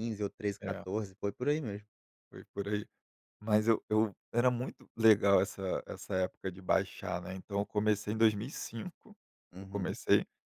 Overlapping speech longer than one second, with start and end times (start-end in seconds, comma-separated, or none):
none